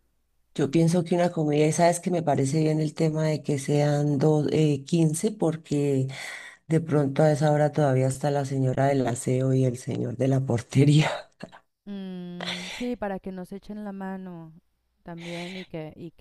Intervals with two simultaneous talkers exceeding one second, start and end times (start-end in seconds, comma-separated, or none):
none